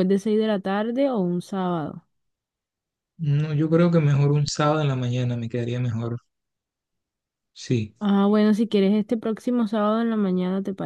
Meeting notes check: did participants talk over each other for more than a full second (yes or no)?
no